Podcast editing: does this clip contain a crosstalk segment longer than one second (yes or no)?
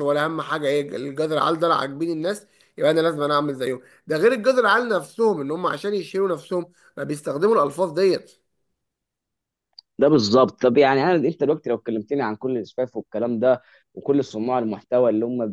no